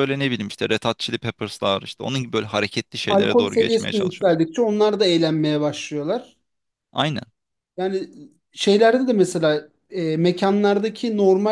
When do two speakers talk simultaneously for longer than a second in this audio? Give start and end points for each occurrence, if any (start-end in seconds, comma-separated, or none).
3.1-4.4